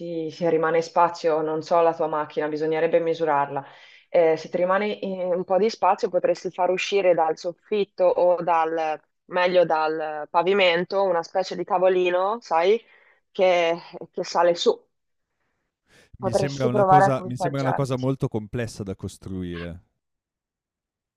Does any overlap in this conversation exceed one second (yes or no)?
yes